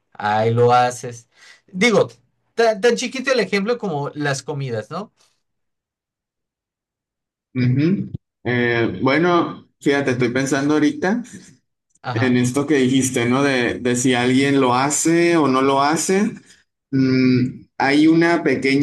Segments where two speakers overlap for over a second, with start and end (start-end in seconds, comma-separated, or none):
none